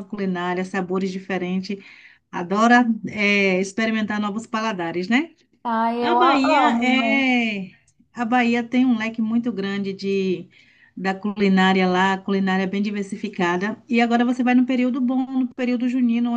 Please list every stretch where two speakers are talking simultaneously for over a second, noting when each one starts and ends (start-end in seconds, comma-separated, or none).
6.0-7.3